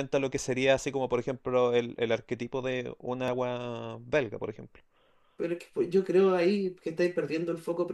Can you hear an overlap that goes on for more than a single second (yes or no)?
no